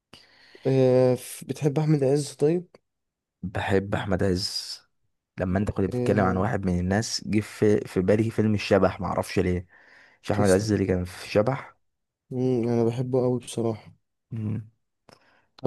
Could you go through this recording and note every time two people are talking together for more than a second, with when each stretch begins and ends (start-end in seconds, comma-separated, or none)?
none